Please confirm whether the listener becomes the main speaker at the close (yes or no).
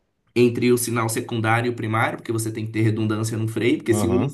no